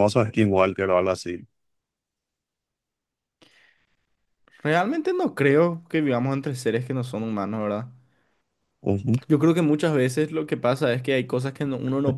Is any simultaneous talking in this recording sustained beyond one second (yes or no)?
no